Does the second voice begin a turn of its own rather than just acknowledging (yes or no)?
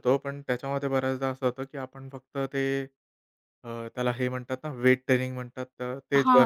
yes